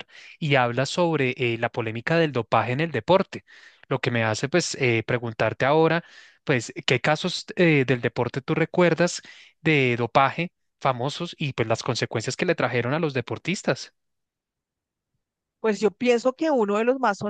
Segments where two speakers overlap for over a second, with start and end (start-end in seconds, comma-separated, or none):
none